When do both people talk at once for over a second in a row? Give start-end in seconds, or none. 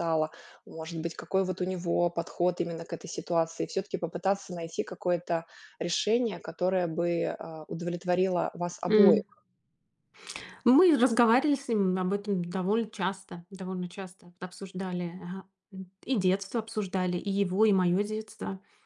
none